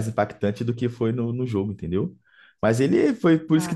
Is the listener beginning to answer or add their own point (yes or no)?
no